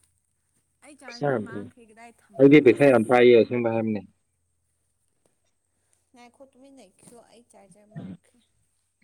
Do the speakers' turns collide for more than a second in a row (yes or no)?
yes